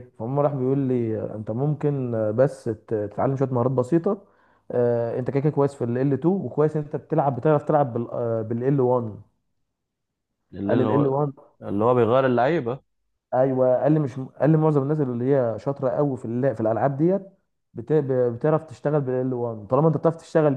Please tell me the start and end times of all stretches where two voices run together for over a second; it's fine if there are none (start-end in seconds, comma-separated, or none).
none